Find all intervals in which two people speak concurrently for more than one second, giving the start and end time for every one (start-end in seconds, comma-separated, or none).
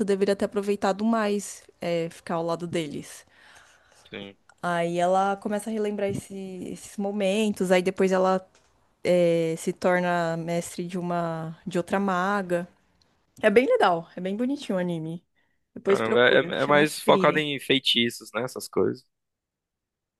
15.9-17.4